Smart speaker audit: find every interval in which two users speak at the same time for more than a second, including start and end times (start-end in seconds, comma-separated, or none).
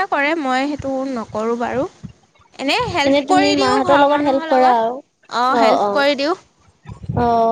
3.1-4.9